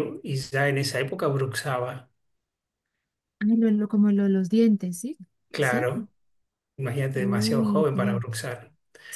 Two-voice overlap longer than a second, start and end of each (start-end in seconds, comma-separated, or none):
7.1-8.5